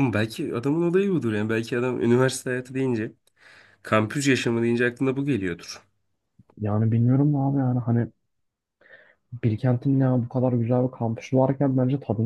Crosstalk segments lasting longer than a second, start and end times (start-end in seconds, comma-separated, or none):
none